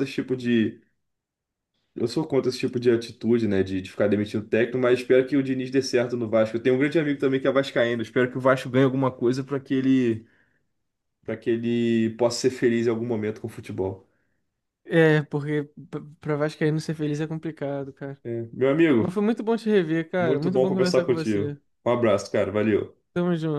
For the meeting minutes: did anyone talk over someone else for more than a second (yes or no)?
yes